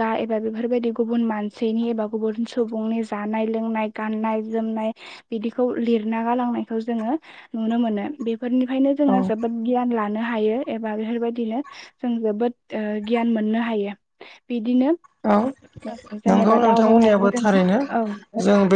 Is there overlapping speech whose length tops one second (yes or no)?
yes